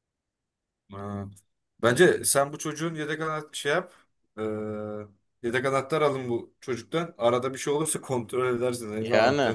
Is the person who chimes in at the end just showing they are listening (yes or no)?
no